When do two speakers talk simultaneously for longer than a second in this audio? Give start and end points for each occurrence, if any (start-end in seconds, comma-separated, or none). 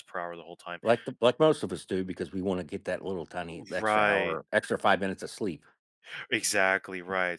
none